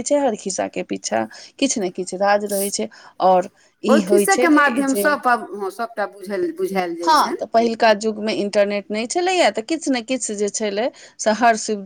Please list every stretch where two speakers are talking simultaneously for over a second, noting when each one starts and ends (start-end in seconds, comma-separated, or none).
none